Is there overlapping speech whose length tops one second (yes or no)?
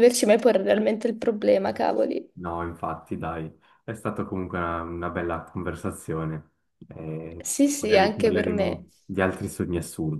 yes